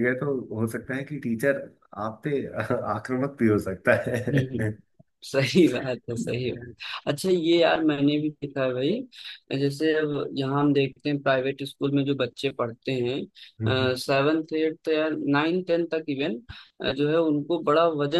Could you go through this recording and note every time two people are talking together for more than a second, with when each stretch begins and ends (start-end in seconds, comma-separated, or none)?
none